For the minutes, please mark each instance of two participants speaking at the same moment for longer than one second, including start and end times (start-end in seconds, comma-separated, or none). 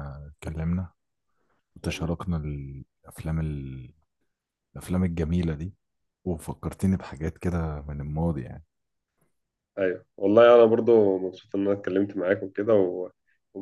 none